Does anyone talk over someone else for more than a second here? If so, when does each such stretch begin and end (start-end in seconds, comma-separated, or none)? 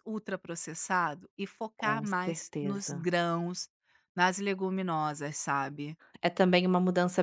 1.8-3.0